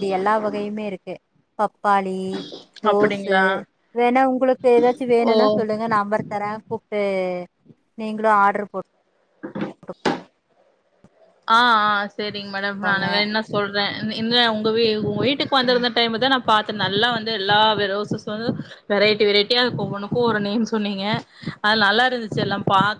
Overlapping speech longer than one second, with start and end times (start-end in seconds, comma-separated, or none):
none